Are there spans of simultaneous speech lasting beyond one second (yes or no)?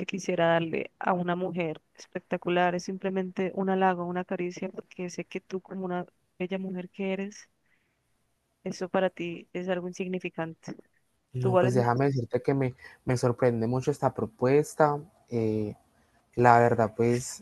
no